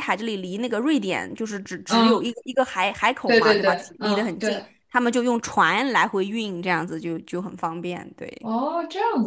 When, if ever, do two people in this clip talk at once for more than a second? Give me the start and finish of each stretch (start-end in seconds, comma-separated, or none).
3.2-4.7